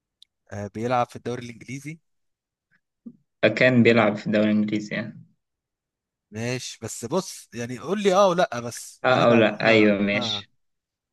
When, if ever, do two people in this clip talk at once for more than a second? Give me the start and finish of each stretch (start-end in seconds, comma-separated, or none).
9.0-10.5